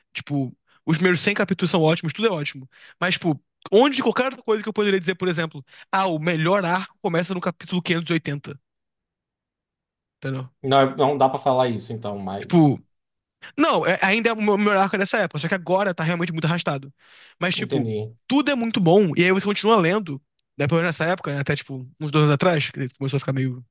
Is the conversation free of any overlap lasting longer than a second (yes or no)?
yes